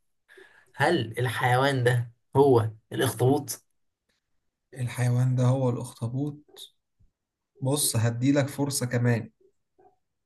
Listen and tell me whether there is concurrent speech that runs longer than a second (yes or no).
no